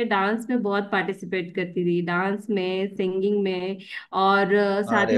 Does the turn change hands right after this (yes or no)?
no